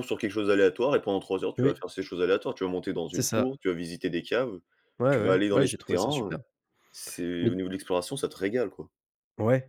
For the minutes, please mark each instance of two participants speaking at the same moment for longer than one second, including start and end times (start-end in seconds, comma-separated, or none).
5.1-6.4